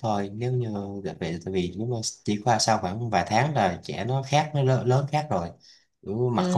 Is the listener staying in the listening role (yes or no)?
no